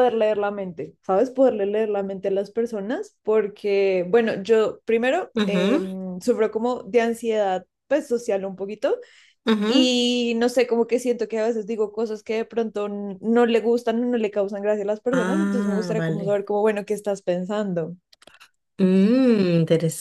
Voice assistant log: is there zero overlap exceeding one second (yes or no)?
no